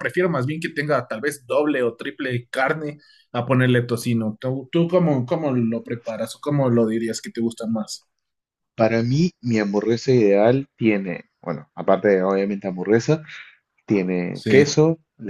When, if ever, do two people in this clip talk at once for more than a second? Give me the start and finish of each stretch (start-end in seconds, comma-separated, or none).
none